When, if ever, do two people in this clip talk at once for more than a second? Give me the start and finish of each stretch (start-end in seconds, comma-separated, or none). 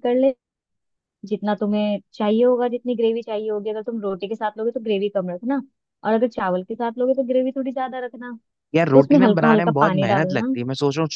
8.9-10.6